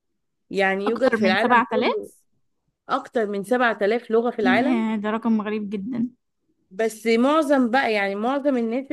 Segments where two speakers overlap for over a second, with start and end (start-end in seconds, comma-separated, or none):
0.9-2.1